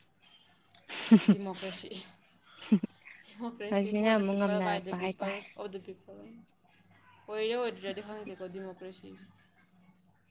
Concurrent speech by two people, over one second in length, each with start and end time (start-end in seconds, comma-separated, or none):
3.7-5.4